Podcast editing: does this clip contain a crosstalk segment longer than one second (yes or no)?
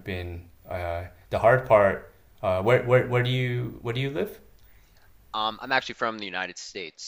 no